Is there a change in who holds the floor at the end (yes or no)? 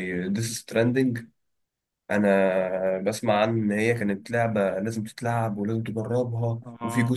no